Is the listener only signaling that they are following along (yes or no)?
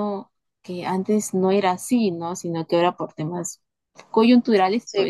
yes